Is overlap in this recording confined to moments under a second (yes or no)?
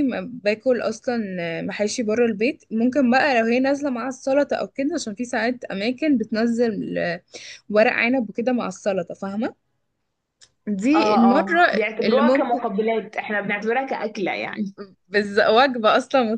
no